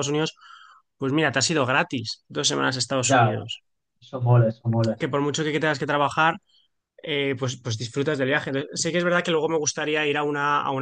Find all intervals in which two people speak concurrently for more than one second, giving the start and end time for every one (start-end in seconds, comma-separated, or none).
none